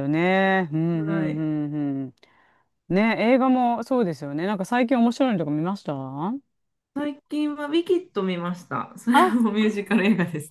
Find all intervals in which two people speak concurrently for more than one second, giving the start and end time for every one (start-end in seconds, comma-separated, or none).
none